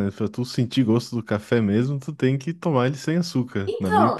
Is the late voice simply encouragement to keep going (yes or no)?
no